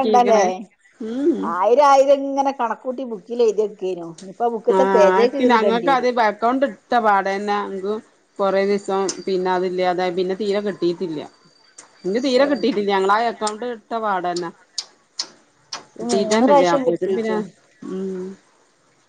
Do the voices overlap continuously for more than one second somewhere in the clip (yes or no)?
yes